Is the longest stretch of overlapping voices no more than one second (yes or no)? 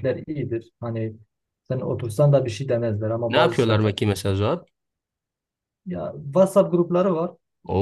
yes